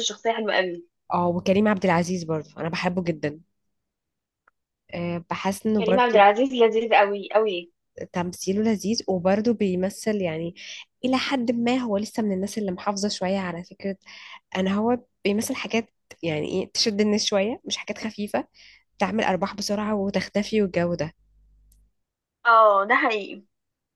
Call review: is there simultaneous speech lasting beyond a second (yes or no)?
no